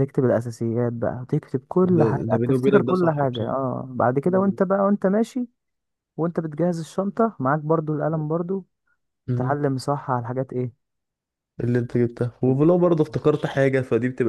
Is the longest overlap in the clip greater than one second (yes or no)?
yes